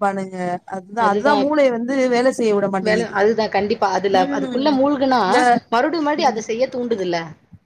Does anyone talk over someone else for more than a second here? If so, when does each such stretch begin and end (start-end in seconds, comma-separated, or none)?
none